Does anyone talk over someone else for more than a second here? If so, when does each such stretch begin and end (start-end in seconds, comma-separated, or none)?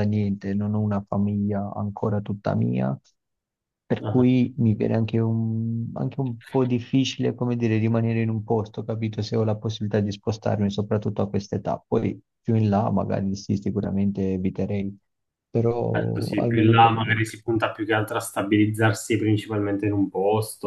15.9-17.2